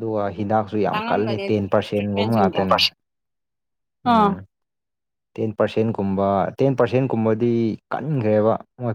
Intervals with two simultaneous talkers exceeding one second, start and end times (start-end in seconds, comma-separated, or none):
0.9-2.6